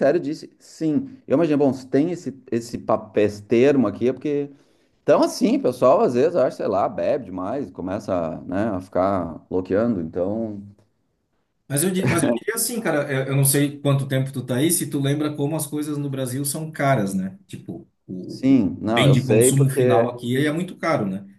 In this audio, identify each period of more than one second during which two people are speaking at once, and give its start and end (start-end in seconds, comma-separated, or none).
18.3-20.1